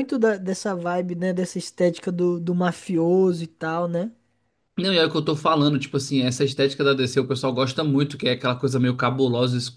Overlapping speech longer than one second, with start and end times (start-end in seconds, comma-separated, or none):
none